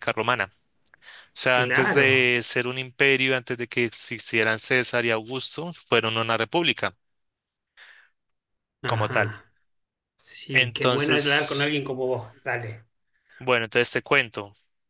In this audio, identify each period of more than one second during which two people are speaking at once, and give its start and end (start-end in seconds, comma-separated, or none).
10.5-11.8